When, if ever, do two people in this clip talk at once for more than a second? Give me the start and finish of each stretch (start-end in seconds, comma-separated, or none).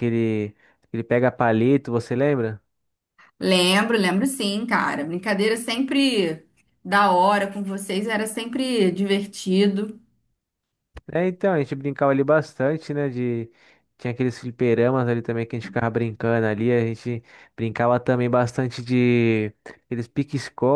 none